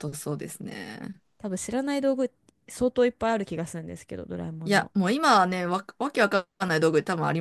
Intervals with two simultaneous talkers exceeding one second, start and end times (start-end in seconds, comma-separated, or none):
none